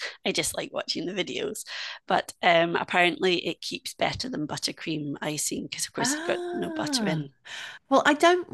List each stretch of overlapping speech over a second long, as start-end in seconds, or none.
6.0-7.2